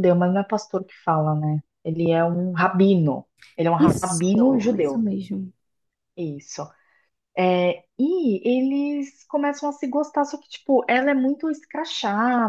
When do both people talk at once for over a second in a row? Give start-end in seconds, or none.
3.8-5.0